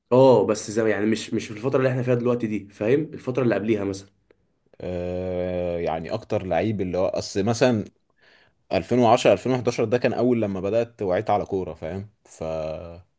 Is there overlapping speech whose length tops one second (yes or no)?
no